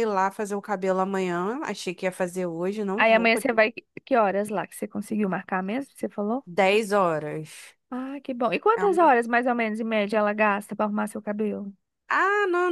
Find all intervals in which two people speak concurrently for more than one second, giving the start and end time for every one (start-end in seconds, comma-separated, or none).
none